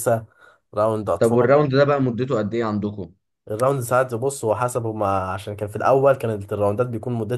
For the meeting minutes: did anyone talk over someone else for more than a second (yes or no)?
no